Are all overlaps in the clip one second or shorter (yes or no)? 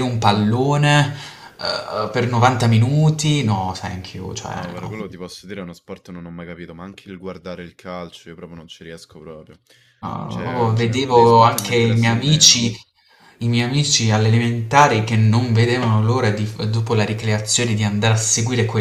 no